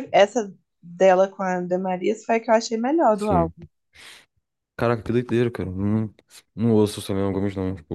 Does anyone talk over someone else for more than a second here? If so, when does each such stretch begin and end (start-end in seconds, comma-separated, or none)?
none